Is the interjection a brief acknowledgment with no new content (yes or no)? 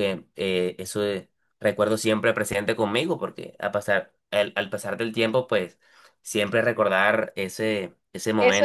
no